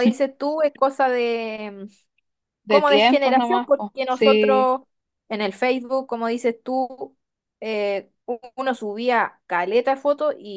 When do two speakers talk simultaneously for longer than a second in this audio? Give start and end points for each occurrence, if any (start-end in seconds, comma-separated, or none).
2.7-4.7